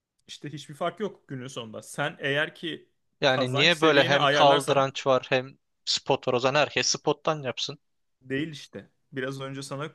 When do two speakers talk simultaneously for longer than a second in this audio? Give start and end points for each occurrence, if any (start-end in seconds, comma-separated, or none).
3.2-4.9